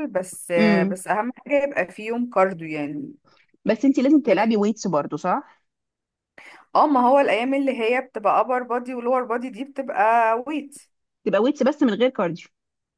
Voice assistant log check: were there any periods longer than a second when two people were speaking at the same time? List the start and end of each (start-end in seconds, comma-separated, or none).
none